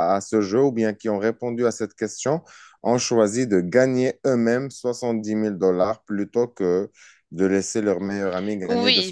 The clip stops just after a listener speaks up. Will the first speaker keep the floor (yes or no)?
no